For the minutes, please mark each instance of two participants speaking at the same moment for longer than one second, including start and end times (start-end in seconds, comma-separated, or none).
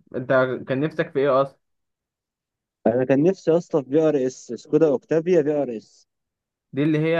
none